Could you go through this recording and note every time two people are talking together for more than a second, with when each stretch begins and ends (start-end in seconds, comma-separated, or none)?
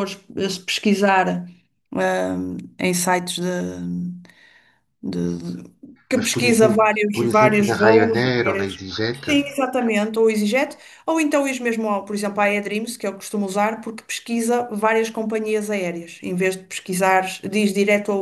6.1-8.7